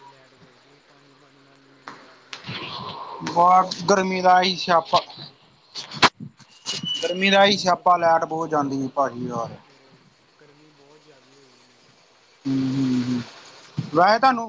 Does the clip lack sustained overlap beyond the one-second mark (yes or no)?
no